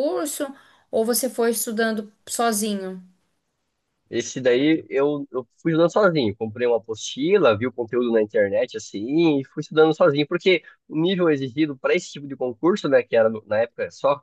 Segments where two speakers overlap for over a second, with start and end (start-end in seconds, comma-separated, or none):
none